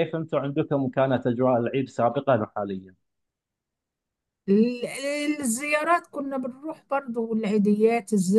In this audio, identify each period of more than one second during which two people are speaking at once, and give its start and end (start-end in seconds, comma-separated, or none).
none